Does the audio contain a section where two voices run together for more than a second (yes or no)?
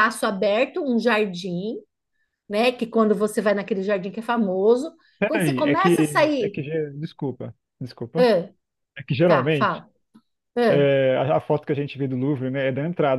yes